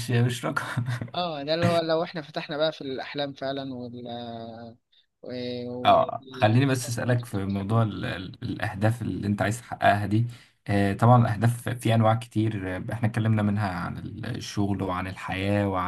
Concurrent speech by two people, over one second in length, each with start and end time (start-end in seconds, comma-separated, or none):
5.8-7.8